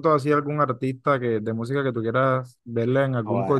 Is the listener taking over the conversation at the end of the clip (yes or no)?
yes